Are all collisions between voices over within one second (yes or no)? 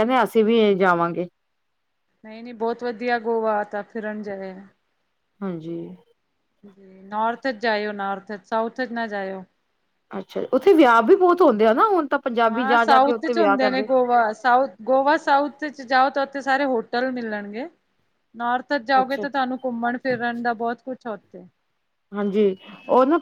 no